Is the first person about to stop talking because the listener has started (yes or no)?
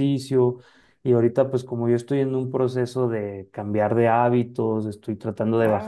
no